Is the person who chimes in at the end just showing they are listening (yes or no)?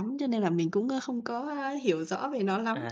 no